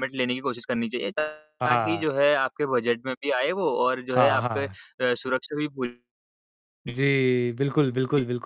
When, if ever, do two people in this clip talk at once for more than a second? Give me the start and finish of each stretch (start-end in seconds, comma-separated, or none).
none